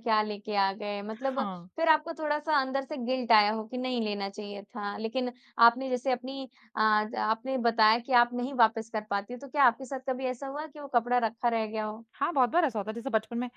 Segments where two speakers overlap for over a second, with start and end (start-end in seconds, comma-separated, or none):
none